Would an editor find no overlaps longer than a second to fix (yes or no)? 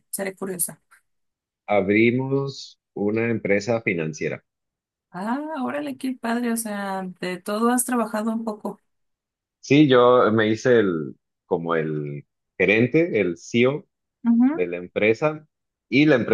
yes